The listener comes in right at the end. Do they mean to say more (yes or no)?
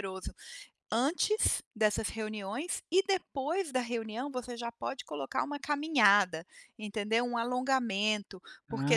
no